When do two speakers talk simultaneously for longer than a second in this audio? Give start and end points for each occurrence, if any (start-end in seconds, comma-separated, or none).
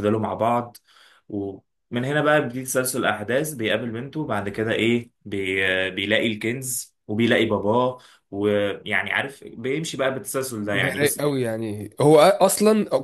none